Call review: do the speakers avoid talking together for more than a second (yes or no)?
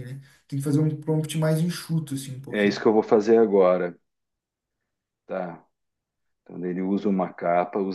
yes